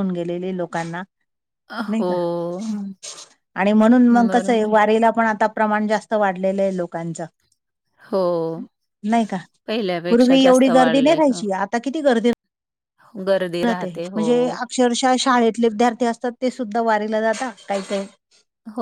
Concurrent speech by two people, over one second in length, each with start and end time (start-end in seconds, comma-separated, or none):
10.1-11.6